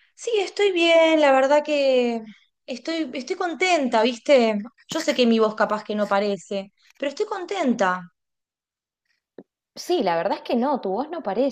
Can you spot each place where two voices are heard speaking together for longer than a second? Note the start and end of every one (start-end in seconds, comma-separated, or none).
none